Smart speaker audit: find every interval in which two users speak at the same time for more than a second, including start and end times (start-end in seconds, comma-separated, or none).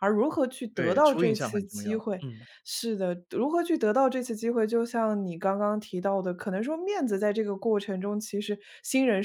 0.7-2.2